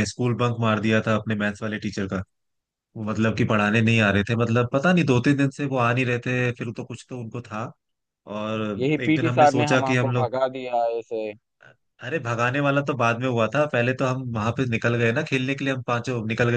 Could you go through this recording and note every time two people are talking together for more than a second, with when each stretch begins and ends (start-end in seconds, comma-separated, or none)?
8.8-10.3